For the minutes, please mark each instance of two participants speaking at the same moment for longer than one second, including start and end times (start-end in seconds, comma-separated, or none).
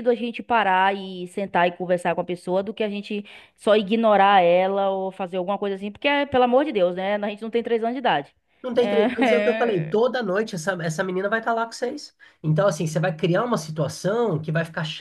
8.8-10.0